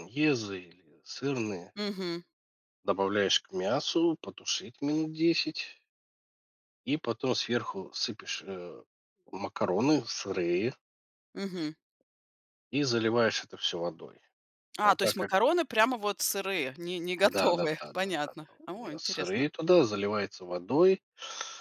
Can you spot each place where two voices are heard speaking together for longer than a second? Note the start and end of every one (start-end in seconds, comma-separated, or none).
17.2-19.5